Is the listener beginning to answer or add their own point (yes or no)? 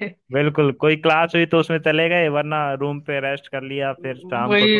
yes